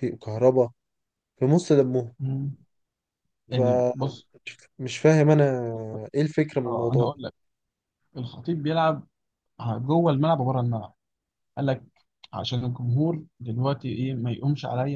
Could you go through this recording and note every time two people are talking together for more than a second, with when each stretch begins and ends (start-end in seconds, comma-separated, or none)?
none